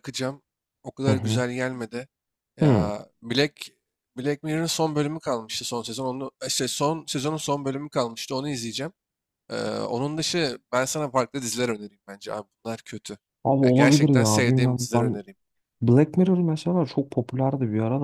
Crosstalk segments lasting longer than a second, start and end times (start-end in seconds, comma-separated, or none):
13.6-15.2